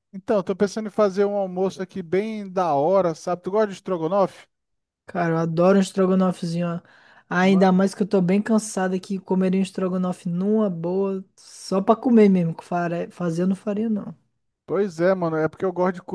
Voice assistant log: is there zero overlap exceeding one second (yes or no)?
yes